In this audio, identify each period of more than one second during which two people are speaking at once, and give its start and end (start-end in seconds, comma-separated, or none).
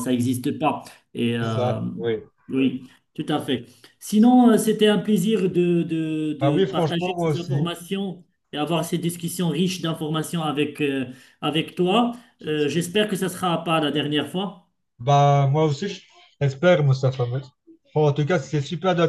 6.4-7.7